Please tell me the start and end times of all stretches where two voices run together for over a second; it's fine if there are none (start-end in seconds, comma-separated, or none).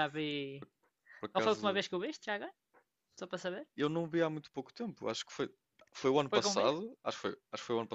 none